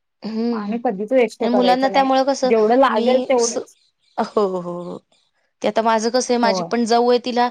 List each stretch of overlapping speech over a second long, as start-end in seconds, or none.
none